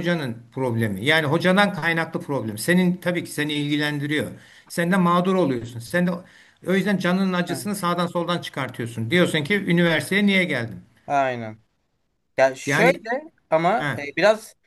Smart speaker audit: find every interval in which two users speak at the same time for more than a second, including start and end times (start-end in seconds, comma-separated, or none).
none